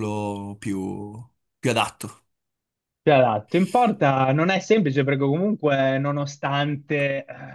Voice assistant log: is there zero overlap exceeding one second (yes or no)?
yes